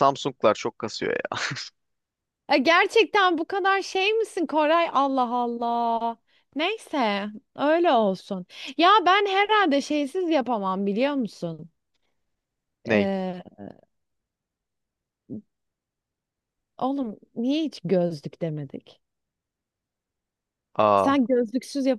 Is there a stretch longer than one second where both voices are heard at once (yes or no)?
no